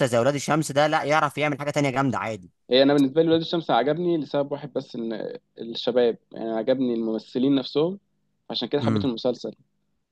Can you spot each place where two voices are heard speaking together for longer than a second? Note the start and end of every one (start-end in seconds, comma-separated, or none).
none